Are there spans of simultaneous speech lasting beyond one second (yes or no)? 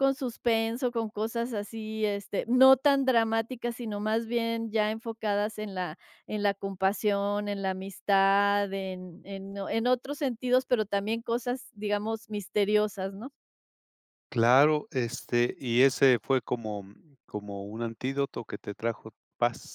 no